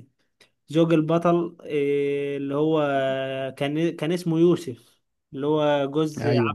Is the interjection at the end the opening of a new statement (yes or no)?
yes